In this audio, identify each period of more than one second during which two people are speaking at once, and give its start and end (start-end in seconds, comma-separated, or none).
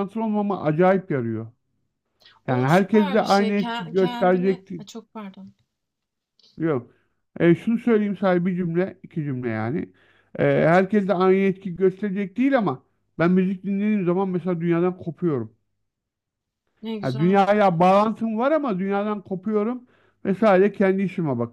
2.5-4.7